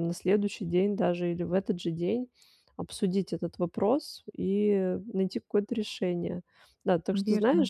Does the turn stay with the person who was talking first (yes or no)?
yes